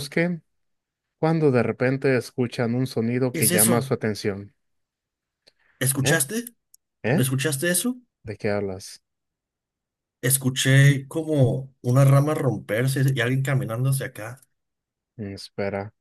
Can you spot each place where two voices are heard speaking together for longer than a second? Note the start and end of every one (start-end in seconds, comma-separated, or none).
none